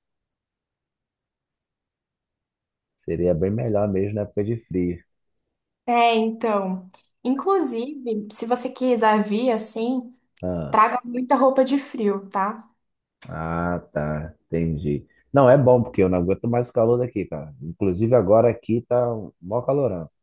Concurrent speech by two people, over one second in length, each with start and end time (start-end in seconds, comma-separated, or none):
none